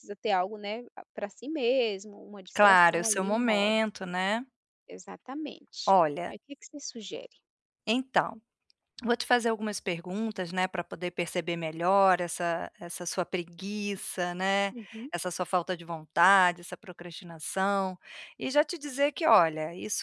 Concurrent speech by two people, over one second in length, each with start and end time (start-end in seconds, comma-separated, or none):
2.5-3.8